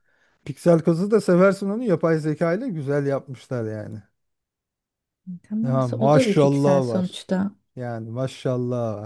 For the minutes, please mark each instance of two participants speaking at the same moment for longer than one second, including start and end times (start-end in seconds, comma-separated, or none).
5.6-7.2